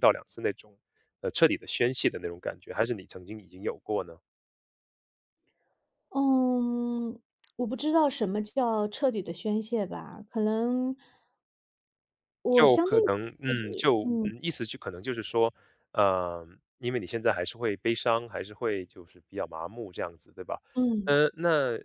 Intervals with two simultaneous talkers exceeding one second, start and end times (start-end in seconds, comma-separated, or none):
12.5-14.3